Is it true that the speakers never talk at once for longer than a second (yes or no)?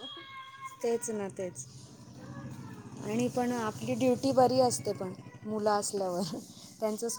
no